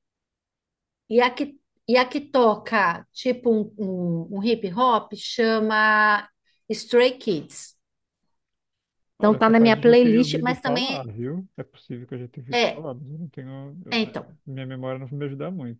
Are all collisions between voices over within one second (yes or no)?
no